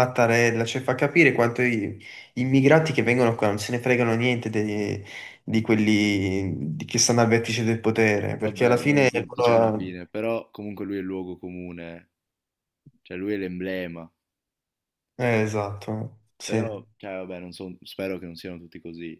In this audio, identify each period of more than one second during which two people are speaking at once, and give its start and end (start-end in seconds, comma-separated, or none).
8.4-10.0